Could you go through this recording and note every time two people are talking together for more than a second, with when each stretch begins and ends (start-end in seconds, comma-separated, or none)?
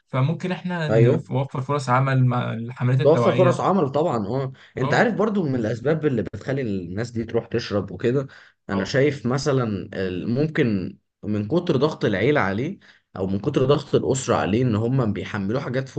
none